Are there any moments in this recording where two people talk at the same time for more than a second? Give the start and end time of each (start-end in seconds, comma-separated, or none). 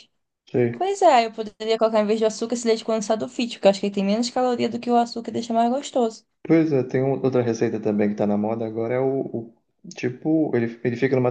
none